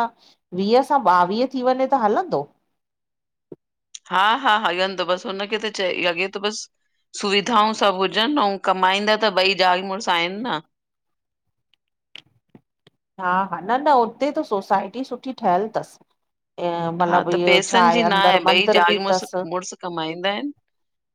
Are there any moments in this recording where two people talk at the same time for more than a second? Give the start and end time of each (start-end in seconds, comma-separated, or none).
17.0-19.4